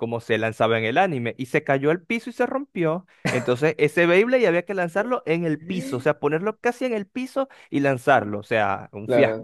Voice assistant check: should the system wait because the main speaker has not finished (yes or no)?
no